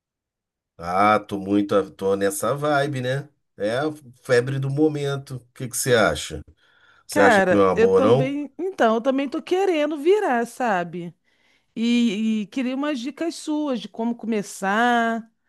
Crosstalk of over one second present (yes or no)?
yes